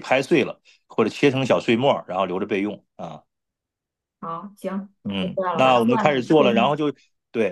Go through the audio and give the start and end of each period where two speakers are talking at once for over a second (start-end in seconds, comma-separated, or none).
5.0-6.8